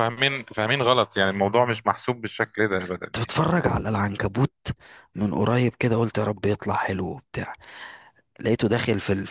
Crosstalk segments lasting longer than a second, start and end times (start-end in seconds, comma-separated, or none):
none